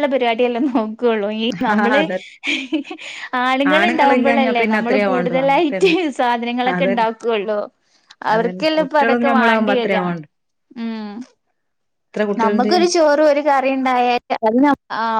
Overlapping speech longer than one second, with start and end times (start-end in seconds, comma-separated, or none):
3.8-6.0, 8.3-10.0